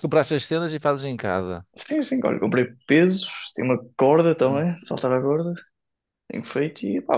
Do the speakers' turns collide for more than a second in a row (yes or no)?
no